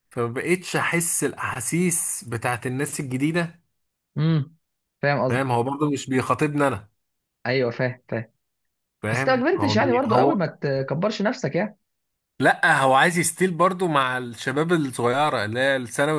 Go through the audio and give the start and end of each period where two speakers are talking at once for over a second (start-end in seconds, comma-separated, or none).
9.1-10.4